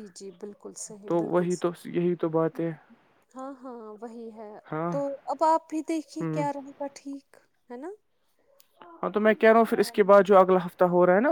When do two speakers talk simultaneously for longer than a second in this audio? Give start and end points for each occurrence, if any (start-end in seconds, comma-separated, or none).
none